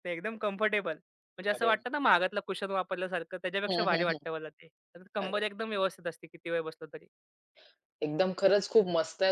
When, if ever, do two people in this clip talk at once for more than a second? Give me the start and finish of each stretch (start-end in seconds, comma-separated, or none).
none